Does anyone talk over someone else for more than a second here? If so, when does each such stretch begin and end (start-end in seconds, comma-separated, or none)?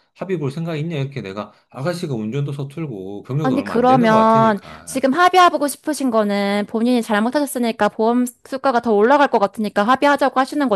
3.4-5.1